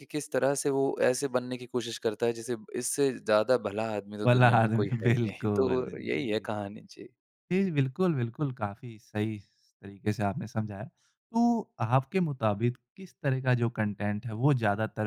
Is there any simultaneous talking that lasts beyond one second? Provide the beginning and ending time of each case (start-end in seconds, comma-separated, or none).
4.2-6.5